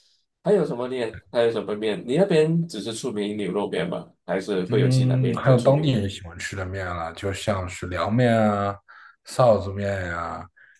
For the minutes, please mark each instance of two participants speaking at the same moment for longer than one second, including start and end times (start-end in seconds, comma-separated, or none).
4.7-6.0